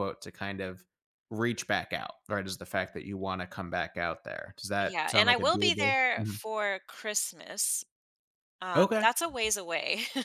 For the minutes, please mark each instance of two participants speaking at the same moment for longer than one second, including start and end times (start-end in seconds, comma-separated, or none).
4.8-6.4